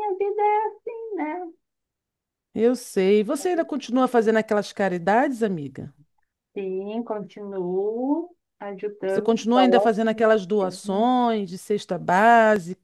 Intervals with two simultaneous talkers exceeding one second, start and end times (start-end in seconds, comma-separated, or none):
9.1-11.1